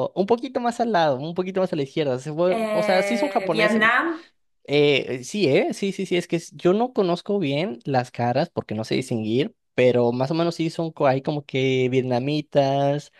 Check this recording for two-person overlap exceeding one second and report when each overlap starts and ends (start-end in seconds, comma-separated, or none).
2.5-3.8